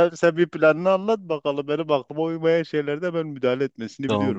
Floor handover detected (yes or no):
yes